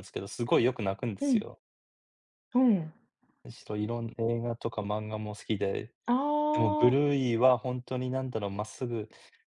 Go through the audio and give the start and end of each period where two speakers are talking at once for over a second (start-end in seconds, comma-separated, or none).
none